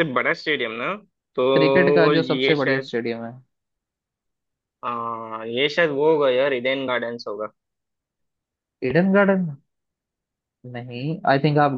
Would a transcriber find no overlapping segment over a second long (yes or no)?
no